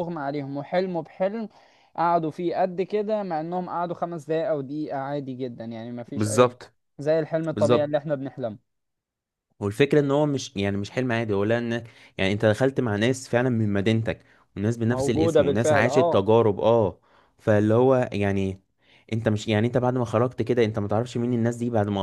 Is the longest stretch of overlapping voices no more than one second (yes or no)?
no